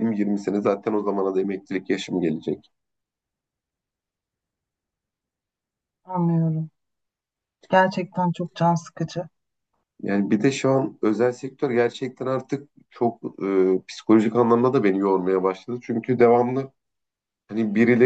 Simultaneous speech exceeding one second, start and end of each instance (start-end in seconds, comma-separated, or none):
none